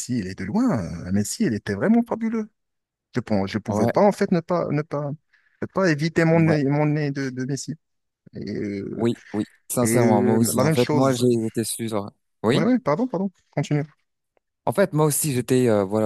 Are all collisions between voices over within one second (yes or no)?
no